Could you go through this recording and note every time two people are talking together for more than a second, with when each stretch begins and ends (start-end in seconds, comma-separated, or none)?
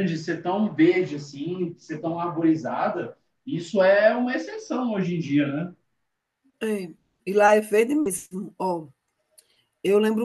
none